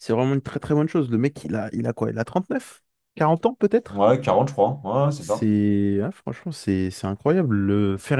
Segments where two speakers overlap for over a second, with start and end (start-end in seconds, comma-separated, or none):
none